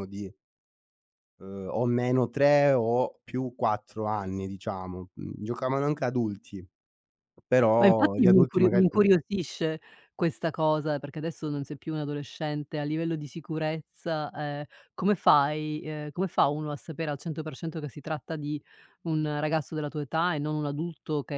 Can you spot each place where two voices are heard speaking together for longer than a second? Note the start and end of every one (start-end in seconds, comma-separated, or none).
7.8-9.1